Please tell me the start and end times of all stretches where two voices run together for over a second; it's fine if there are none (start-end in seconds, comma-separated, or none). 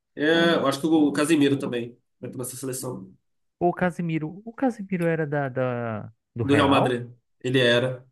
none